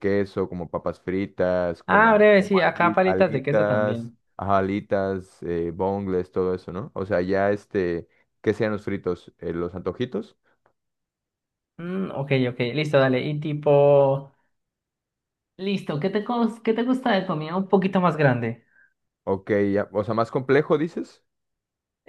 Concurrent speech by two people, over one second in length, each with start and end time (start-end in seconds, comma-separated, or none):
1.9-4.2